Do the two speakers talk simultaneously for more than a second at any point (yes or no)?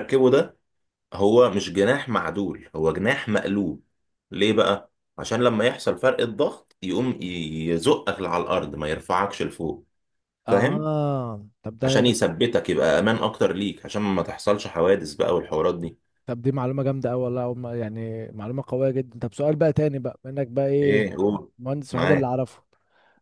no